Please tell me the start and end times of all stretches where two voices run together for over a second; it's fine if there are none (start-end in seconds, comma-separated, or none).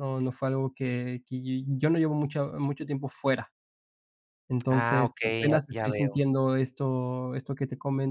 4.7-6.2